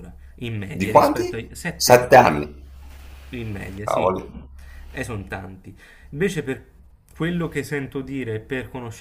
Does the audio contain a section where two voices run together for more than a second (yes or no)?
yes